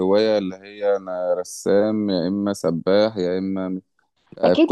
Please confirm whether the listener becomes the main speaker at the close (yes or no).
yes